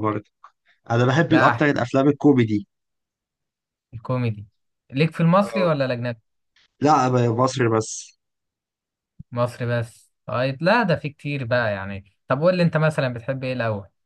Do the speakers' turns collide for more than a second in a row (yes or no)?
no